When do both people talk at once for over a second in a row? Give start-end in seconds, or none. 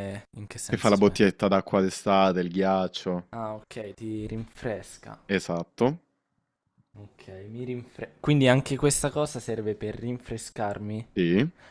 none